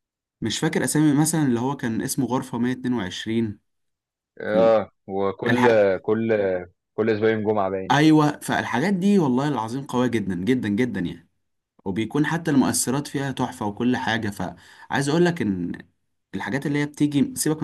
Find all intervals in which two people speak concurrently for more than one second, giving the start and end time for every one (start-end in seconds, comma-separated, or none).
none